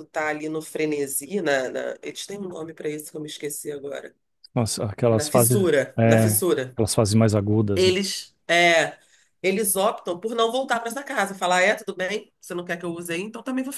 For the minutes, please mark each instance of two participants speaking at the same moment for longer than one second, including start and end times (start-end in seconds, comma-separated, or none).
5.1-6.8